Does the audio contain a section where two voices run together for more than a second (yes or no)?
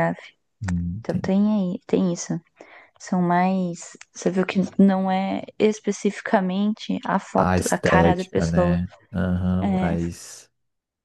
yes